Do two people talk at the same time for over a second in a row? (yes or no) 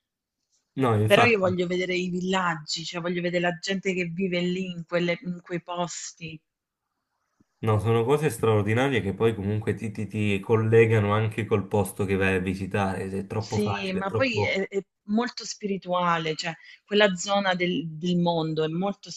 yes